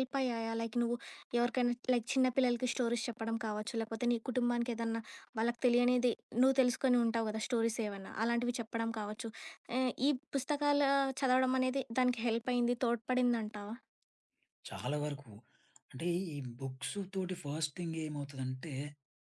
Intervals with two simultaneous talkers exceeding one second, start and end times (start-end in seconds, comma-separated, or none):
none